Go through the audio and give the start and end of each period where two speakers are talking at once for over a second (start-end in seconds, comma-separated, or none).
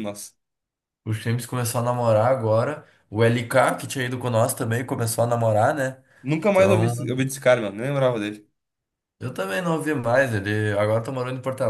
none